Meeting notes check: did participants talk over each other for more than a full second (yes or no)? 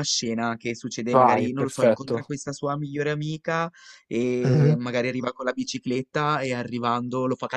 yes